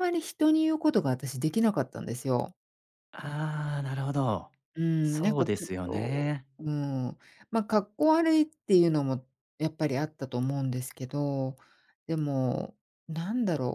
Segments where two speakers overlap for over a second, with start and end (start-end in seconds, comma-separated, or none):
5.0-6.5